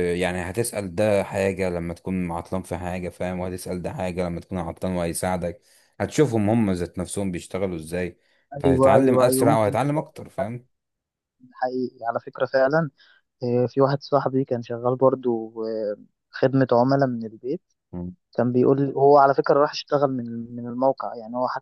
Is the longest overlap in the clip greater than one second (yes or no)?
yes